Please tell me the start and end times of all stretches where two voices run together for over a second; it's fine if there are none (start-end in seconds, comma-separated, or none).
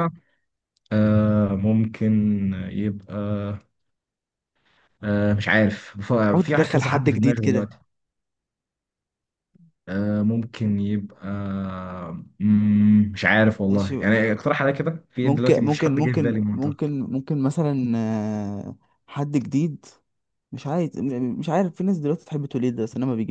6.2-7.7, 15.2-16.9